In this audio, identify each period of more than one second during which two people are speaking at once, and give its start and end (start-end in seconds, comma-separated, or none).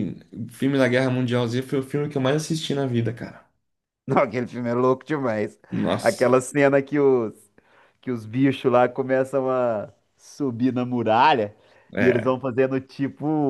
none